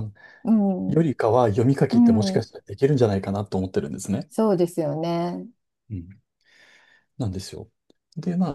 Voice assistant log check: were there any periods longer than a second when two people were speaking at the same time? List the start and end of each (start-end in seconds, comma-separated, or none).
none